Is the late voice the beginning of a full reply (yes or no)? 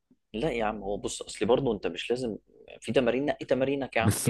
yes